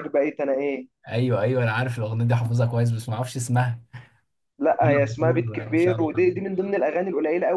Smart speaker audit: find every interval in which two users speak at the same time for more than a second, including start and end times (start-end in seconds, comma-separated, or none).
4.7-6.4